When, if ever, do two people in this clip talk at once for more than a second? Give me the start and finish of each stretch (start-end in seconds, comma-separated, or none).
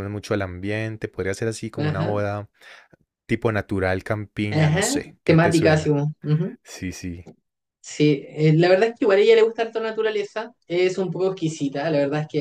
4.5-6.0